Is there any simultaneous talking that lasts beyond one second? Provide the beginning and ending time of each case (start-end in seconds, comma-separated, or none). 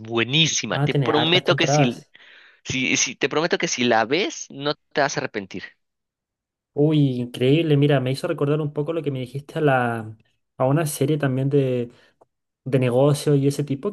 0.7-2.0